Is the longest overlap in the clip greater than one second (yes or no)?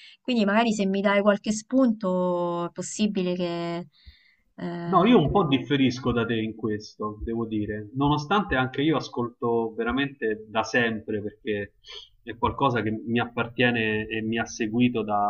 no